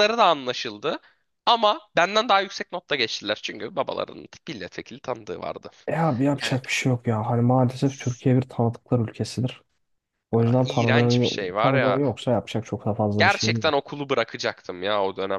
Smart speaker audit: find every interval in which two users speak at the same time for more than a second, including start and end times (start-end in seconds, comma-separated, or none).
10.4-12.0